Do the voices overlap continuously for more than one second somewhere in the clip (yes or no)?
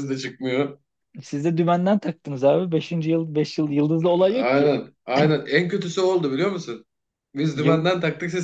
no